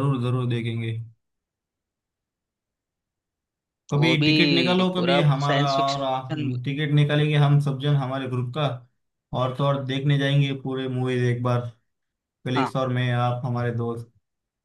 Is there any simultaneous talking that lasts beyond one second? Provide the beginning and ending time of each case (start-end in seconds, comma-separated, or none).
4.9-6.5